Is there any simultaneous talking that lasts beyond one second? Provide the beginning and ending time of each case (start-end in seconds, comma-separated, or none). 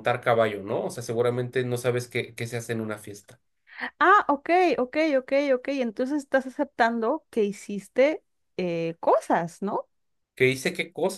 none